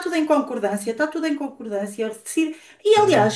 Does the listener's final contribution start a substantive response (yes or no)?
no